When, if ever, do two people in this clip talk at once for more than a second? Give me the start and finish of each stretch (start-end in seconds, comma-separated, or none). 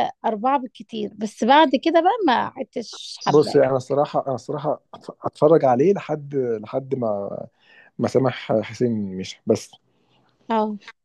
none